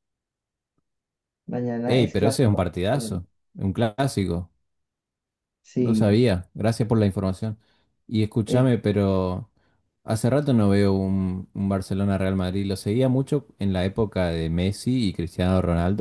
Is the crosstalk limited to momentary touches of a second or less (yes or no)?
no